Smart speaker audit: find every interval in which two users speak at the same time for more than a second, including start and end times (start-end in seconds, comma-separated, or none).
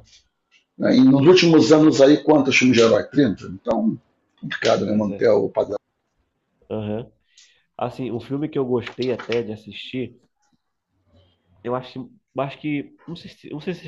none